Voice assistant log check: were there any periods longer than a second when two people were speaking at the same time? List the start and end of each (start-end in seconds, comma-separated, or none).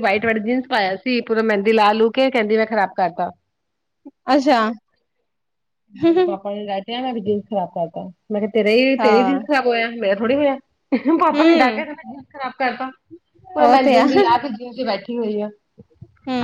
none